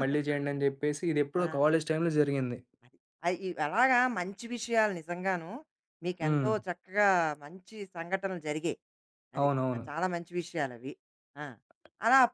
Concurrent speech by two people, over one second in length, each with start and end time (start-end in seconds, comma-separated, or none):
none